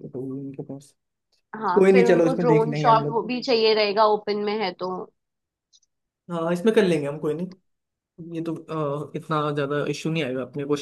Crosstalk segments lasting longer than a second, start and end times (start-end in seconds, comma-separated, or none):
1.8-3.2